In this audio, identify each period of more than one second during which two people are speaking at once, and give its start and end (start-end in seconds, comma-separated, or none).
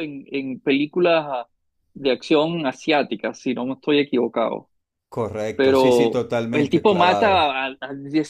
5.5-7.5